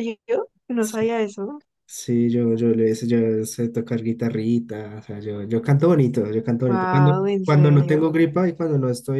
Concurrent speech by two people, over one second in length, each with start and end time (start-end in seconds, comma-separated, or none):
6.7-8.1